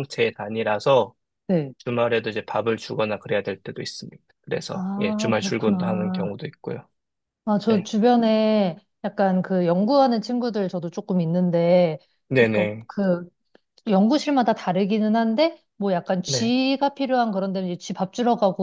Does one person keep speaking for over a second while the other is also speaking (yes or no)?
yes